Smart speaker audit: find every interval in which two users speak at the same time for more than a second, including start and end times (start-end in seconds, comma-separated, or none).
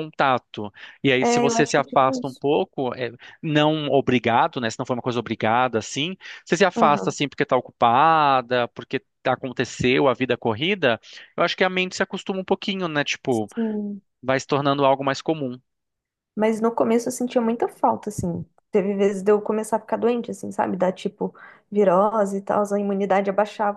1.2-2.4